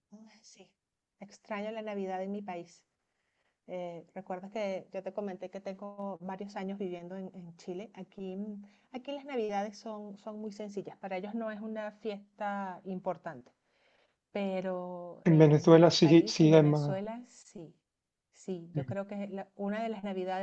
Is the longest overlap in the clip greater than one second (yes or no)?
yes